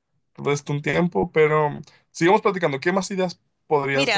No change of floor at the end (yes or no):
no